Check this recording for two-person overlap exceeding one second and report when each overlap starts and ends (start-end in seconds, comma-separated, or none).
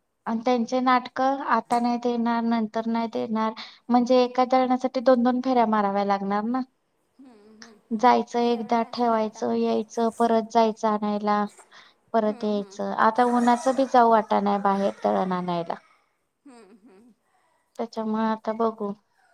8.4-10.4